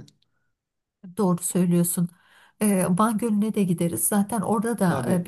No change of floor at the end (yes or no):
yes